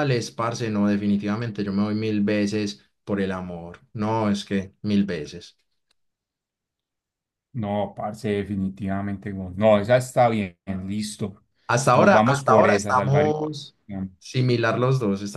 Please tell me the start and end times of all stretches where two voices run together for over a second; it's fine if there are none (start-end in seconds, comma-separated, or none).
11.9-13.2